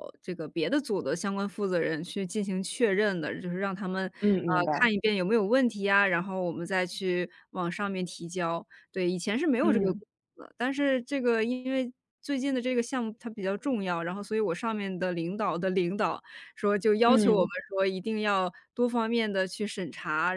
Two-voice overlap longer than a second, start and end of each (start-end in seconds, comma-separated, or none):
none